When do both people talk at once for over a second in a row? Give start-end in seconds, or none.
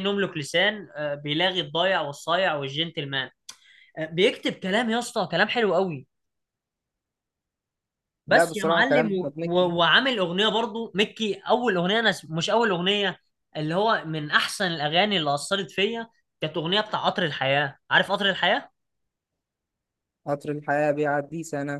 8.3-9.7